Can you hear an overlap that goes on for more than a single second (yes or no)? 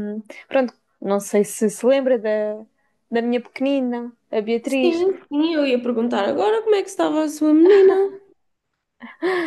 no